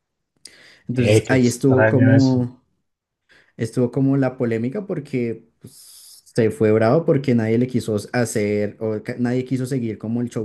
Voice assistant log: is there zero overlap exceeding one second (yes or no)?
no